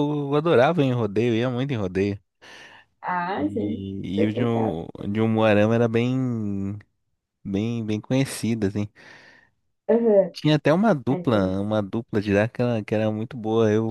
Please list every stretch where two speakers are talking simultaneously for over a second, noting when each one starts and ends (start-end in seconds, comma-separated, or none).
3.4-4.8